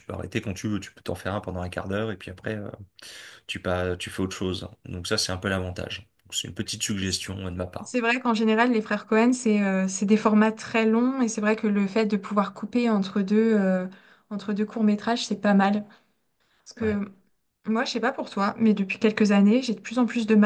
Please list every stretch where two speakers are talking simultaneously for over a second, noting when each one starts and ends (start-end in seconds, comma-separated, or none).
none